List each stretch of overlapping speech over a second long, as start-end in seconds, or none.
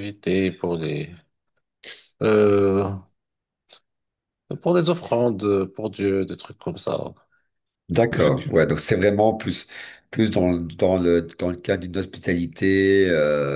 none